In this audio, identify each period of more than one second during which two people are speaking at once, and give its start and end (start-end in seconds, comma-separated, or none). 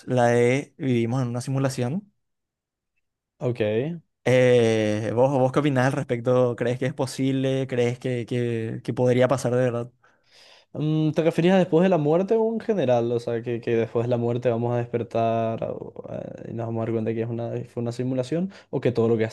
none